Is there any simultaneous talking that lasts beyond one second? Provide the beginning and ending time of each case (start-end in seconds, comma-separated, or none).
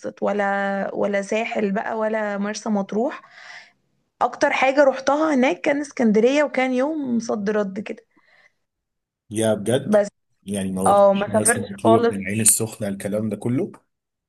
10.9-12.1